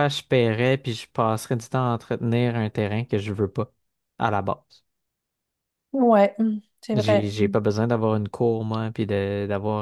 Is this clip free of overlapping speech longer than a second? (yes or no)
yes